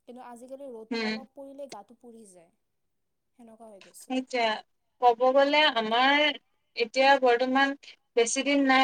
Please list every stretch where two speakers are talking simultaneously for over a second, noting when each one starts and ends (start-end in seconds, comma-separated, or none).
none